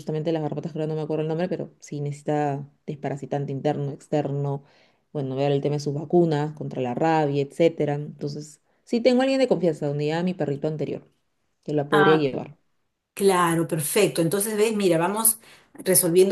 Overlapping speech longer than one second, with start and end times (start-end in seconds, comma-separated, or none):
none